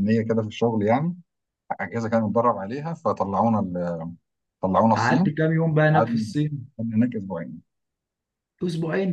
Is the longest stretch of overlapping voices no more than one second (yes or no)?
yes